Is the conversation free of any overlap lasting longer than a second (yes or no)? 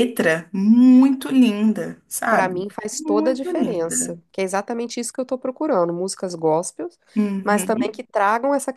no